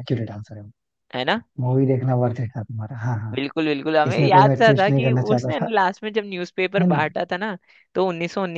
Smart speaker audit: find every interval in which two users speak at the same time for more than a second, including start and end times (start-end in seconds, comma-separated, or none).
4.1-5.7